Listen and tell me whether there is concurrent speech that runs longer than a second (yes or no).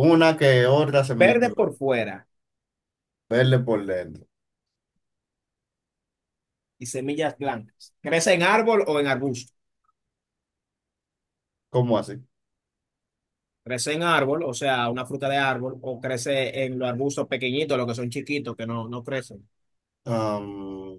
no